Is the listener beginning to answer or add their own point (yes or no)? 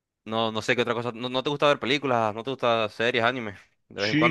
yes